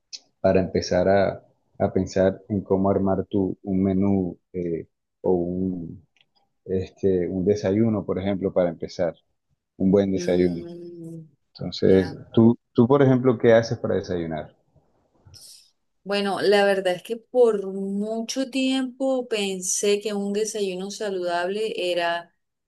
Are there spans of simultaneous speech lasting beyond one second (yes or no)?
no